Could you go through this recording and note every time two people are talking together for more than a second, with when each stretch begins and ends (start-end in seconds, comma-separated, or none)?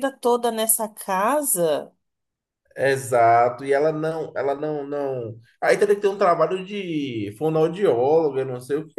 none